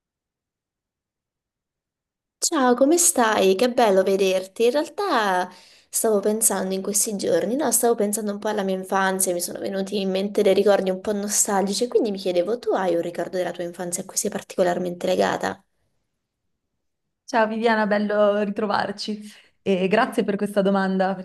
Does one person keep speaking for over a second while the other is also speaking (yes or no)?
no